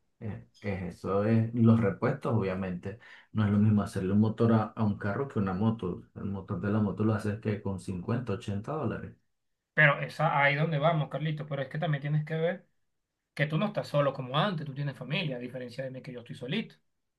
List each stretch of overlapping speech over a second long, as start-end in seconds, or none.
none